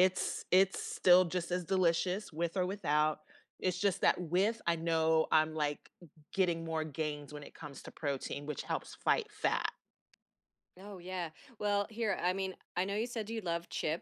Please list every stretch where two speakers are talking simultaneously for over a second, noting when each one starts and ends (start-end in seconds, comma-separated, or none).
none